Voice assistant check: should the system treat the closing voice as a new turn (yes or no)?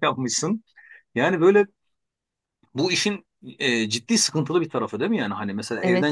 no